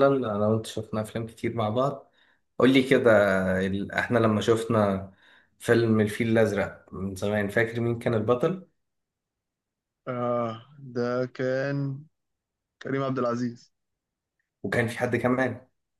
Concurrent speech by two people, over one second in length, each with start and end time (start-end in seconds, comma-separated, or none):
none